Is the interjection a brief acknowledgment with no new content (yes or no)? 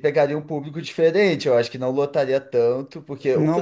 no